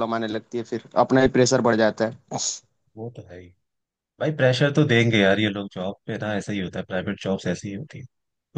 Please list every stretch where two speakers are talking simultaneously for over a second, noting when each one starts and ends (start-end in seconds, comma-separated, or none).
none